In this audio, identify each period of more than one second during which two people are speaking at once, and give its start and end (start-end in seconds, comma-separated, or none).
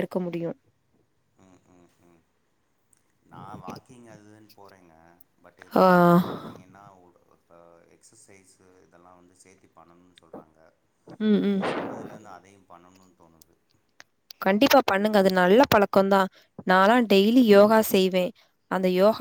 none